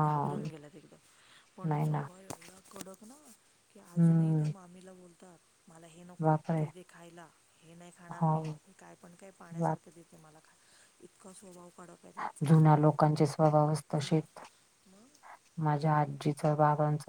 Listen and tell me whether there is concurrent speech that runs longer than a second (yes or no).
no